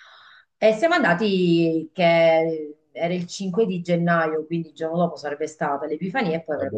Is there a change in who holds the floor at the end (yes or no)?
no